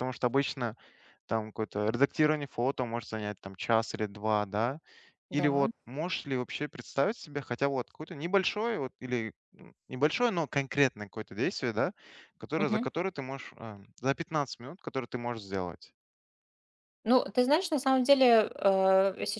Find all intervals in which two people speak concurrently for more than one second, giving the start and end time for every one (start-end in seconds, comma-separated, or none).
none